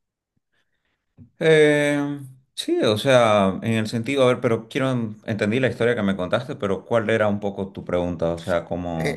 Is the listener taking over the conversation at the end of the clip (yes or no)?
yes